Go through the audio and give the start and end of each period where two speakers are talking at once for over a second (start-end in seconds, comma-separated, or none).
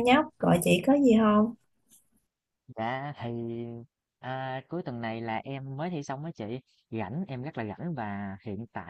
none